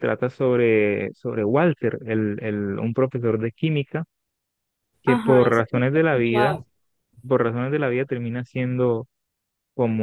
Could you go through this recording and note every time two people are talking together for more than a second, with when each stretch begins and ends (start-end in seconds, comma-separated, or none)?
5.0-6.6